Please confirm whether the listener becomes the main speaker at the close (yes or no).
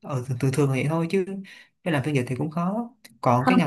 no